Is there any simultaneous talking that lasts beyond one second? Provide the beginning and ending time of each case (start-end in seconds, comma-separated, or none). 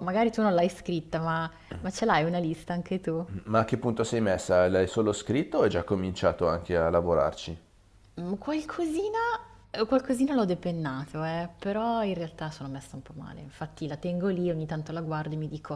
none